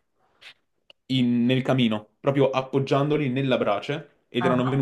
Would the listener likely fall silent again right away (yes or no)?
yes